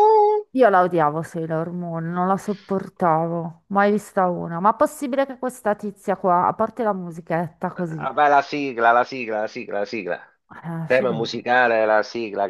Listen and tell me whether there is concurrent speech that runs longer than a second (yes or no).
no